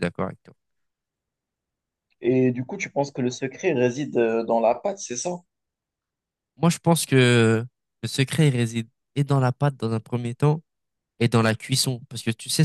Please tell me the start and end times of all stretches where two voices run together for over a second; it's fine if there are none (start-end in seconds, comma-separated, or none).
none